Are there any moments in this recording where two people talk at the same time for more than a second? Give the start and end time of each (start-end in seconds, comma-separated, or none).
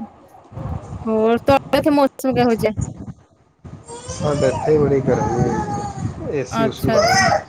none